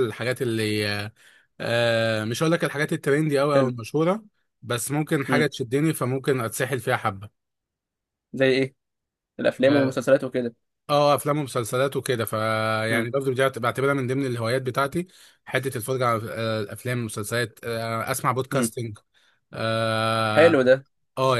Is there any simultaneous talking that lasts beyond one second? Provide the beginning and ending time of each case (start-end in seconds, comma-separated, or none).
none